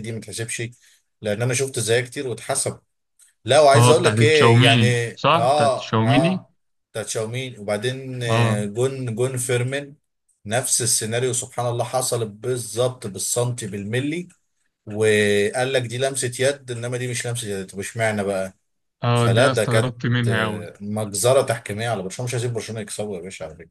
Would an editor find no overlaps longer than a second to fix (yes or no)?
no